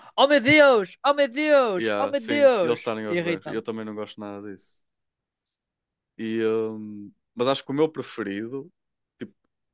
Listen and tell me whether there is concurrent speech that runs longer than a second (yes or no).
yes